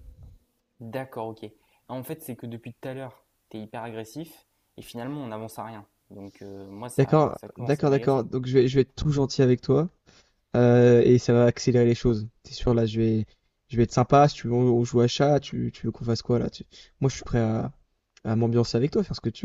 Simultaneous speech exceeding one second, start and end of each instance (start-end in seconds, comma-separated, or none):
7.0-8.2